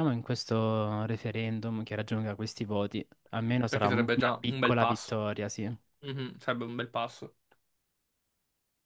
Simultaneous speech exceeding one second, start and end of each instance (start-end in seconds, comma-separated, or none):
3.7-5.2